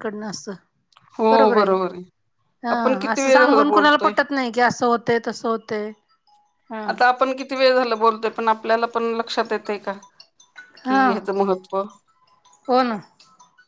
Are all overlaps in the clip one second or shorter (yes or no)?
no